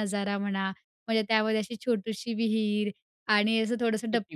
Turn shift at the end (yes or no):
no